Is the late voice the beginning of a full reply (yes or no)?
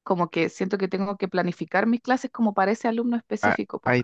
yes